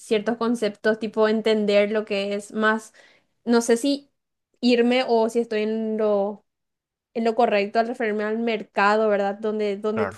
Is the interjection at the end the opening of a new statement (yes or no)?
no